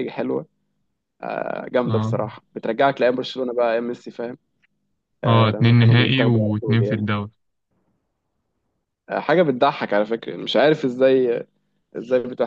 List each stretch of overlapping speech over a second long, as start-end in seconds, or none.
5.2-7.1